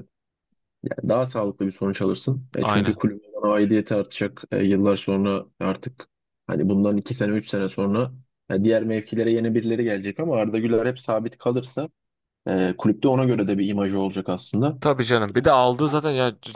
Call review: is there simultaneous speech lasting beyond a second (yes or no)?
no